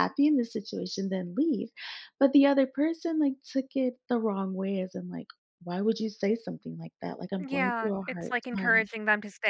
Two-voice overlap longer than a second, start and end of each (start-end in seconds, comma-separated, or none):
7.4-8.9